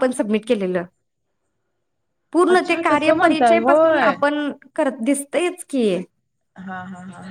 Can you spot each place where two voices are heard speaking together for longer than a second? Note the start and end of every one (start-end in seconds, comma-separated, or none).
2.5-4.1